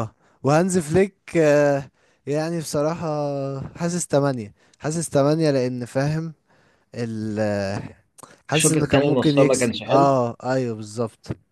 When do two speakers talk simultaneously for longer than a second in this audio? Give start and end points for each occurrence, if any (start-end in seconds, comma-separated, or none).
8.5-10.1